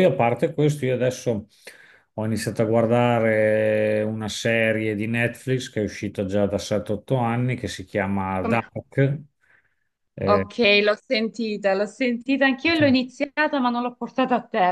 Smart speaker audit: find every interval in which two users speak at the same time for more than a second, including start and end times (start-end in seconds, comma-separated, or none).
none